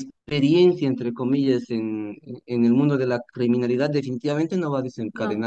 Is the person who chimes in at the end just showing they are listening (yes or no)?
no